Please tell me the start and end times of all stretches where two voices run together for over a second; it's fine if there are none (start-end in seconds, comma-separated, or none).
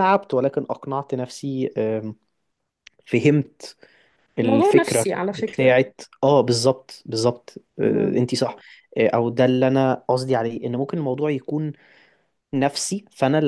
4.4-5.8